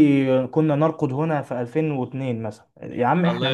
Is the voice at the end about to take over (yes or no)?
yes